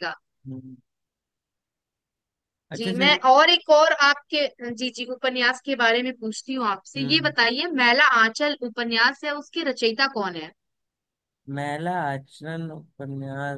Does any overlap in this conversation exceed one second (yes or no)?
no